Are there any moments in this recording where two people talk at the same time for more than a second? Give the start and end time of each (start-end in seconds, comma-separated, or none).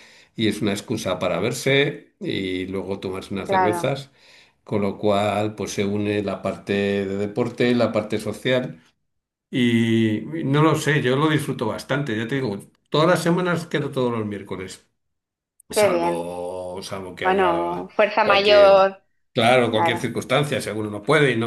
17.2-18.9